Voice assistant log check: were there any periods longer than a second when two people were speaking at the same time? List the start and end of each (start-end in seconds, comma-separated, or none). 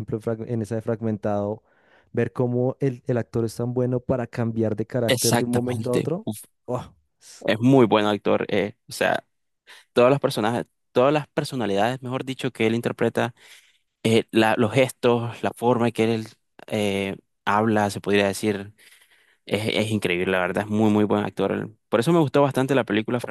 5.1-6.3